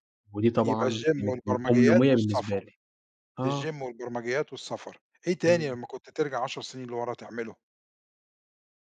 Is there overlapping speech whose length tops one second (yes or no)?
yes